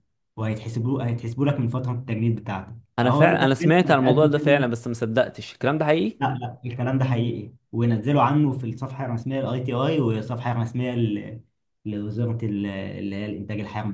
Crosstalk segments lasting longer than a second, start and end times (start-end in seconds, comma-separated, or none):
3.0-4.7